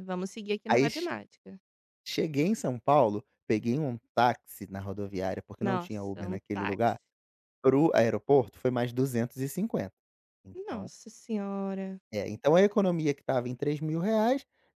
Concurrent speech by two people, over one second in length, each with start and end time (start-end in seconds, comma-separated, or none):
5.6-7.0